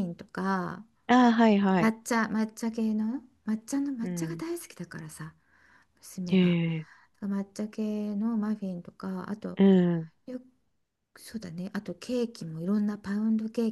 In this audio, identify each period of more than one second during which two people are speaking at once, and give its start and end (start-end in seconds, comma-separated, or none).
none